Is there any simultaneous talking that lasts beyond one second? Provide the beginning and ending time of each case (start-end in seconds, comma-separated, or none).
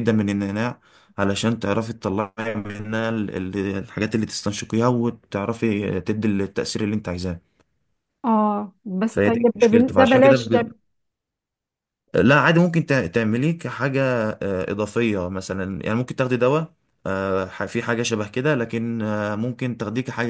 9.1-10.4